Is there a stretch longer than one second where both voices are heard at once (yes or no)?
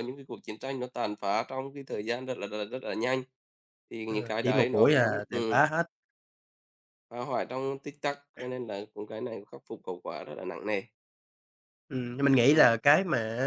yes